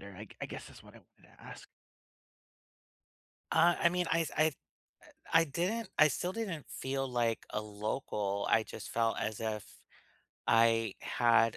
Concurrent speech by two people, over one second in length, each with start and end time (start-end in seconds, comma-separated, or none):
none